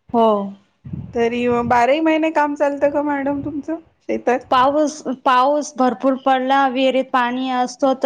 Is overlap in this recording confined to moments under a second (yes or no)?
yes